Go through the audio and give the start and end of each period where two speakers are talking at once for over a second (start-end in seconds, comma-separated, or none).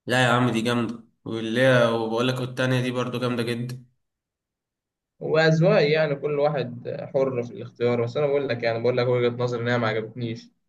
none